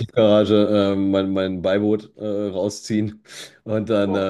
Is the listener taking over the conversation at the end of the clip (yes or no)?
no